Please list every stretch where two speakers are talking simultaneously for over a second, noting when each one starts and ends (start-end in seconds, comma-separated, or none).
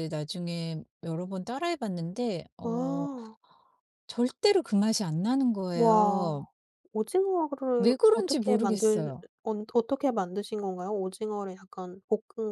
7.8-9.2